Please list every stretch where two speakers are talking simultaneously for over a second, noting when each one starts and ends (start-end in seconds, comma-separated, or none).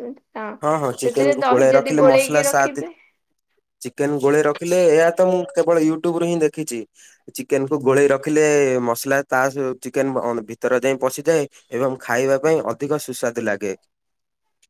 1.0-2.8